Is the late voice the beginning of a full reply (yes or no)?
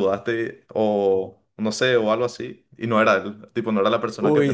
yes